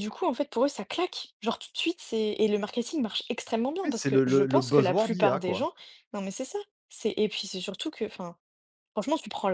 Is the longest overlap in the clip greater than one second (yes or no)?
yes